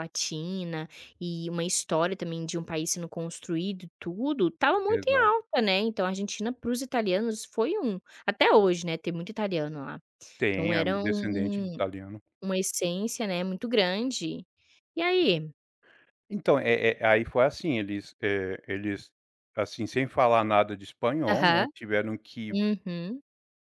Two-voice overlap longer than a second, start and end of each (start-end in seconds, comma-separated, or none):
none